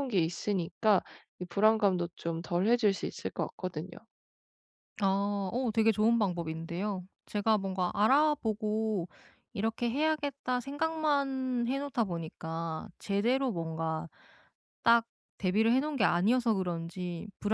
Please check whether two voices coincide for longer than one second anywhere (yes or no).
no